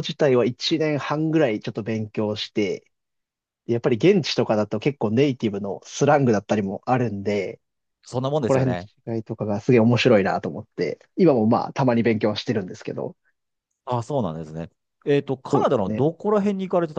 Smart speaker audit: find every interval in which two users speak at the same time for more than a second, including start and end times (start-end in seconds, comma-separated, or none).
none